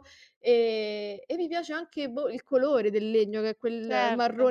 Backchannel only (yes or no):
yes